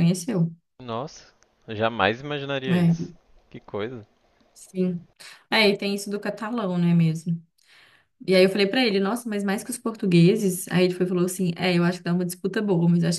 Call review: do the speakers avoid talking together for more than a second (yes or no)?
yes